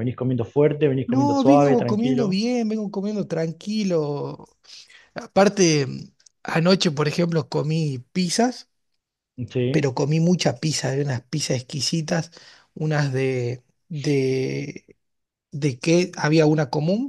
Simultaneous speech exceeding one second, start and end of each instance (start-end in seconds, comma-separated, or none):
1.1-2.4